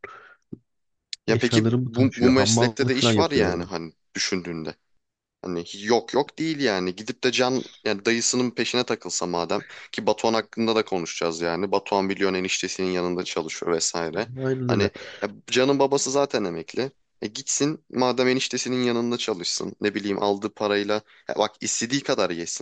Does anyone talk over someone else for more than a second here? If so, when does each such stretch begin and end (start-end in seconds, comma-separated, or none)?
1.3-3.7